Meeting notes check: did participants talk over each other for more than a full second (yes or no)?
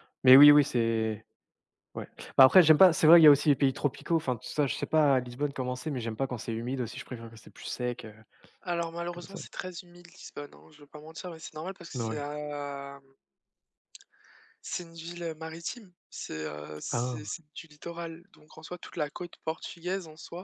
no